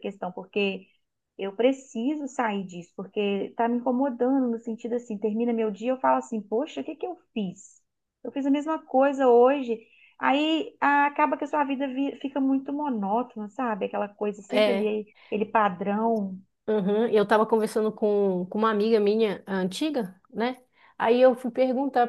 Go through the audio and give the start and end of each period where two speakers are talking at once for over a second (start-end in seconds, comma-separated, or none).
none